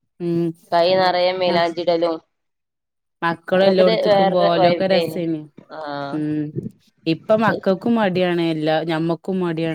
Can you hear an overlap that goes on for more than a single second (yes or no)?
yes